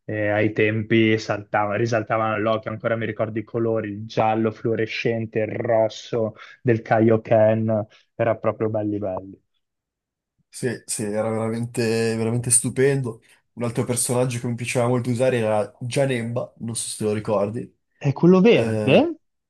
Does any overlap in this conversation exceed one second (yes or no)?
no